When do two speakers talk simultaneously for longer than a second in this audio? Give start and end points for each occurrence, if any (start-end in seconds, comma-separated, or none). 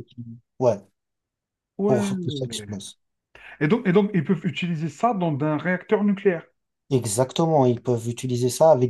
none